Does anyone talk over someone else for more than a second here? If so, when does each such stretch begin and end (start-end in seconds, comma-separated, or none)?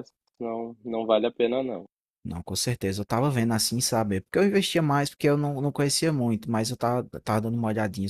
none